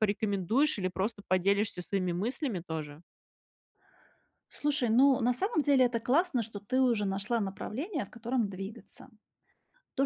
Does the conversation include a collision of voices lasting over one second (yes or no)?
no